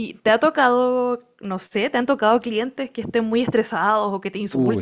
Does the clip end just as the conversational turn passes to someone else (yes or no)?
yes